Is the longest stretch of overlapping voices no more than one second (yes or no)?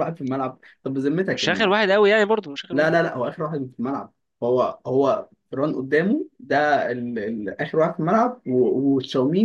yes